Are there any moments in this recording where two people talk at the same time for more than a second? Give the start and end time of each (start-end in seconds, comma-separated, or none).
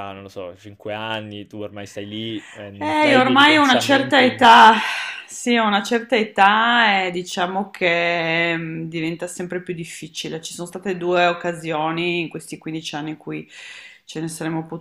2.8-4.4